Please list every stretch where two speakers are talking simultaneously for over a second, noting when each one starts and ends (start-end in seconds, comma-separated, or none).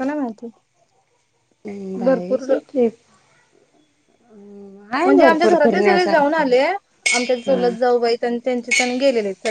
5.0-6.5